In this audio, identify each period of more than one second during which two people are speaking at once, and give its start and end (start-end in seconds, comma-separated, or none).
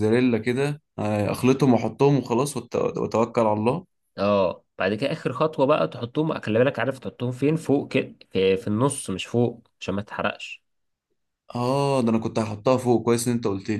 none